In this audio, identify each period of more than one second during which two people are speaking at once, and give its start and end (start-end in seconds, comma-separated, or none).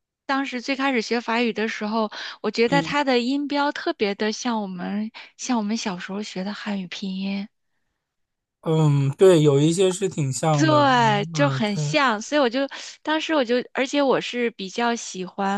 10.5-12.0